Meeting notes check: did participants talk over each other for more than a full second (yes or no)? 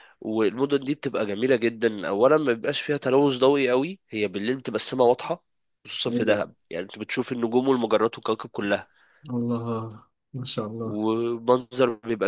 no